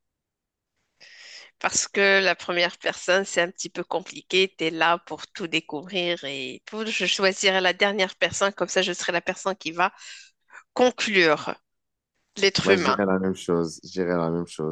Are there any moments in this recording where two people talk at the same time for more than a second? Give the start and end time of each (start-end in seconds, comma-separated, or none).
none